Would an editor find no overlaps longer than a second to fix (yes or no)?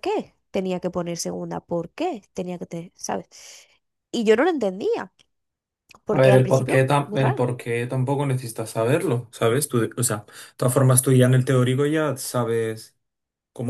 no